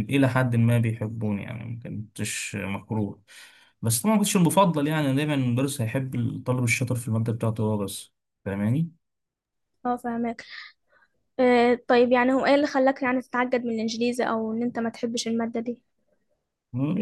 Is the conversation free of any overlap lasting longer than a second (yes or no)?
yes